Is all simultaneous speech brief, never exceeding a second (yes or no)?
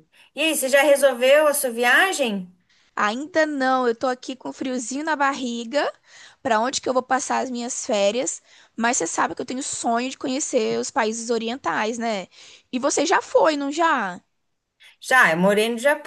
yes